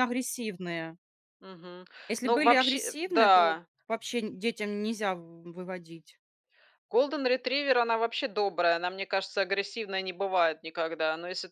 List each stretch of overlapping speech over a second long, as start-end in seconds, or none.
2.2-3.7